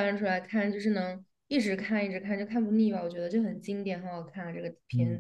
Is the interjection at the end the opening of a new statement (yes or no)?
yes